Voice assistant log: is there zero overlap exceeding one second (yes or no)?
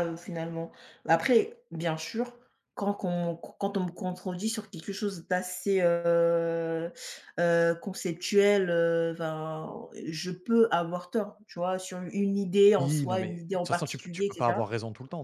no